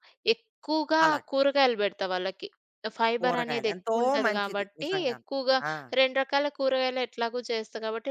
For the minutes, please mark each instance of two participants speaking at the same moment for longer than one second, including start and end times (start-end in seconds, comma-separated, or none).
3.2-5.3